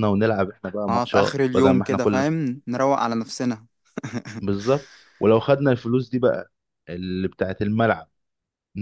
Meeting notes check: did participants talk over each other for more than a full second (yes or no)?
yes